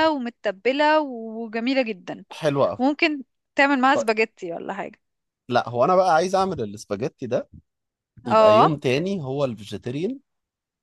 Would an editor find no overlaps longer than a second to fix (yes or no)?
yes